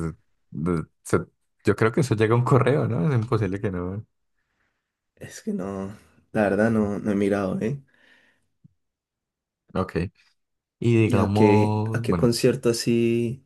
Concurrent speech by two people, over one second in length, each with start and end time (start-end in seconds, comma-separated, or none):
11.0-12.3